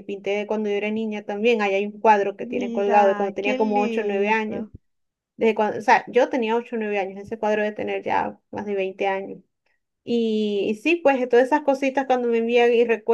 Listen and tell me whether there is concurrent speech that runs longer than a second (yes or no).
yes